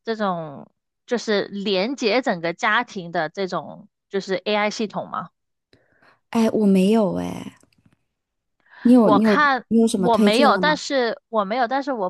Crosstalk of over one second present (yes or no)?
yes